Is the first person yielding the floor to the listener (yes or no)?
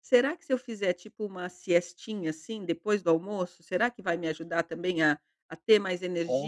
yes